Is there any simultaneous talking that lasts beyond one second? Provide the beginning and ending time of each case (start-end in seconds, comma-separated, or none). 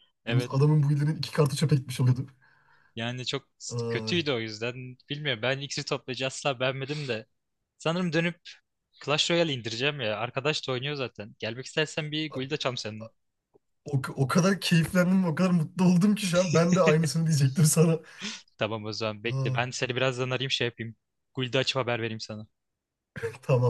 none